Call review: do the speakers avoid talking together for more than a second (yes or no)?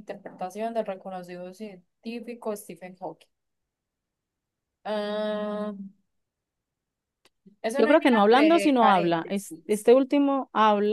no